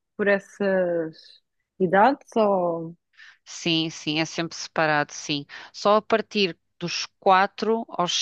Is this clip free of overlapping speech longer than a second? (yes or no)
yes